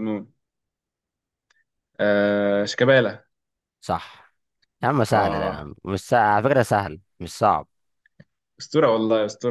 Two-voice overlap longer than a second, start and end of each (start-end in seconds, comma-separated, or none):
none